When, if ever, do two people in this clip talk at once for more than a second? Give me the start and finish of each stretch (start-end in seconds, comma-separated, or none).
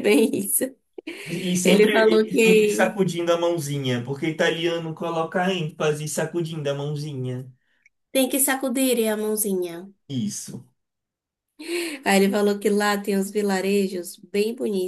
1.6-2.9